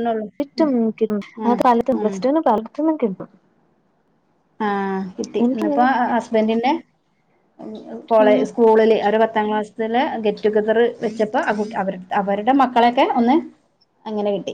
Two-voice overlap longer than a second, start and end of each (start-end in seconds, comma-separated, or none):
none